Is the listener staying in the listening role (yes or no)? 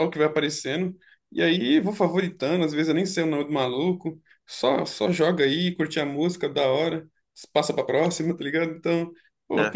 yes